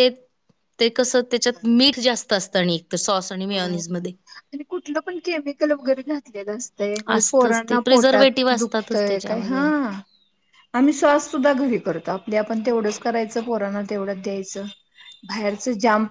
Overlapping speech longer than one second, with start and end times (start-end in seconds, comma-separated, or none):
7.2-9.6